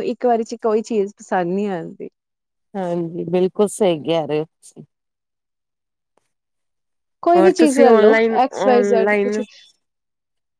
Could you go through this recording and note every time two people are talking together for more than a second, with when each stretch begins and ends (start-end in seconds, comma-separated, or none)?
7.4-9.4